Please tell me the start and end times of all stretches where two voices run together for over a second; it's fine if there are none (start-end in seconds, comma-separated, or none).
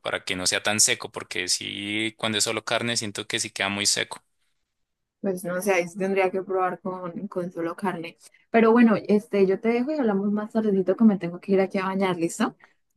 none